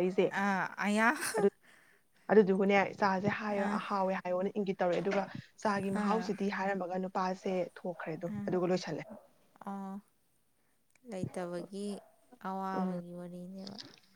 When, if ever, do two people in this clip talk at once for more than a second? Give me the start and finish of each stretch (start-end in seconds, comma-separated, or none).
none